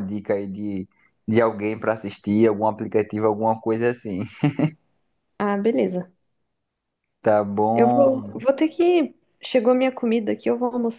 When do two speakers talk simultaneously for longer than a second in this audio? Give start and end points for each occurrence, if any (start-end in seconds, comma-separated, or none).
none